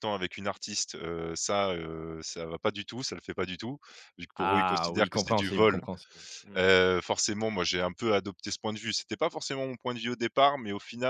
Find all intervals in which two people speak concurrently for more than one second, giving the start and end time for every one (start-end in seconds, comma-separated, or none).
4.3-5.8